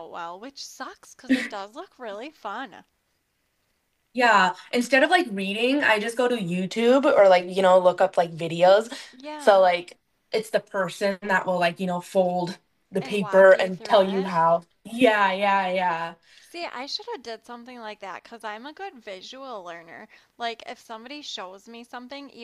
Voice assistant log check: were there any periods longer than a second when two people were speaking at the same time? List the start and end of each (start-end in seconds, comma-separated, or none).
13.0-14.3